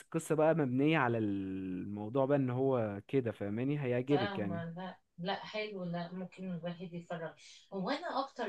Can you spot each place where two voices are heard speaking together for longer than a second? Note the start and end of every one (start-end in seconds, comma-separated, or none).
none